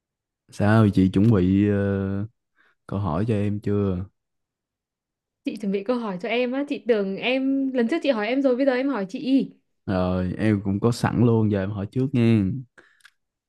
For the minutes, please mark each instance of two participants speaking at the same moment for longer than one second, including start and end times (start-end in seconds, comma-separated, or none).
none